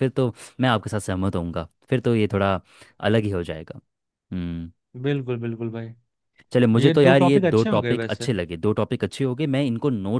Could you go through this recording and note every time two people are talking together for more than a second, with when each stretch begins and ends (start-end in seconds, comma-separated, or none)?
6.8-8.3